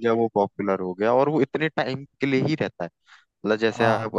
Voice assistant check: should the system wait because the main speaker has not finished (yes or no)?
yes